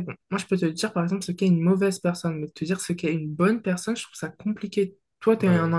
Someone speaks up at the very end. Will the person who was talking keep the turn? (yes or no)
yes